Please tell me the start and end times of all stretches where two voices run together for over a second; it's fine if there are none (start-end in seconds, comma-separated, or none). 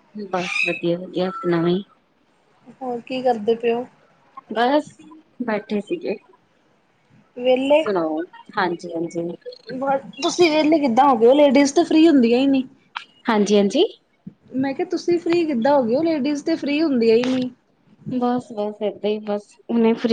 none